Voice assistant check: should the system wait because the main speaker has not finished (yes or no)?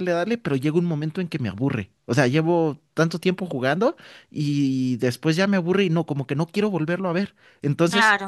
yes